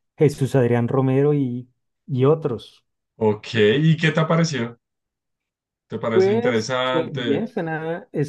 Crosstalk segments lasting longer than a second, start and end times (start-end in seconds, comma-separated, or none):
6.1-7.5